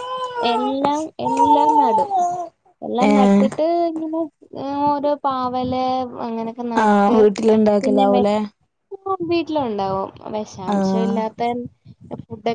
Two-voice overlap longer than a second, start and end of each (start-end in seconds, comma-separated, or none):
none